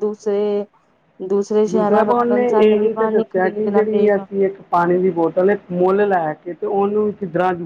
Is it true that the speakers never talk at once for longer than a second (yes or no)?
no